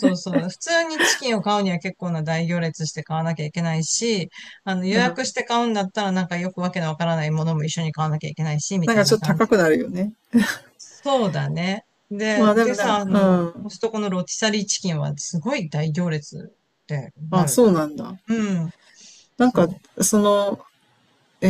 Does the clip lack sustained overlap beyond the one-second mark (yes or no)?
no